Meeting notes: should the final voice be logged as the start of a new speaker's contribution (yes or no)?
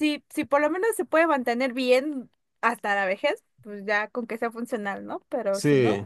yes